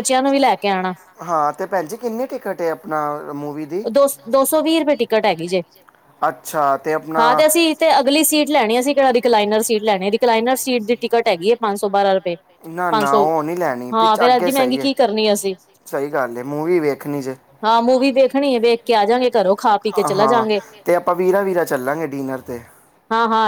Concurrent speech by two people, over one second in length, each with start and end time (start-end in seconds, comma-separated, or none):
19.1-20.4